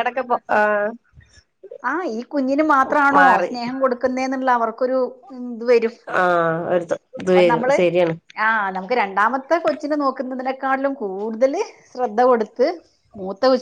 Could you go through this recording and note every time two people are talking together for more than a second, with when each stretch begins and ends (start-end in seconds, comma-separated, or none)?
none